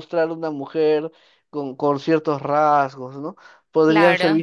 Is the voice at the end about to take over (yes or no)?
no